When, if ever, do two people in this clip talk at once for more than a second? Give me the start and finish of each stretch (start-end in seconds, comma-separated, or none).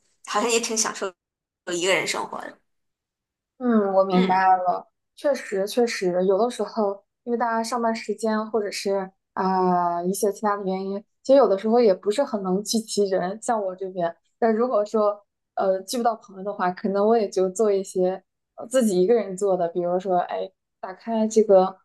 none